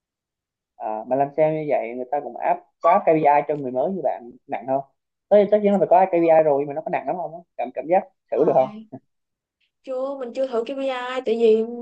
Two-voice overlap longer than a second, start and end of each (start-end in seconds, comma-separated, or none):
none